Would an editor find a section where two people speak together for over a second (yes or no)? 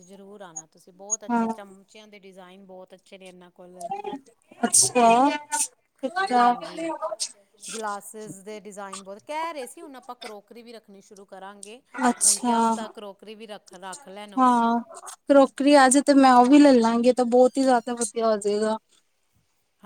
no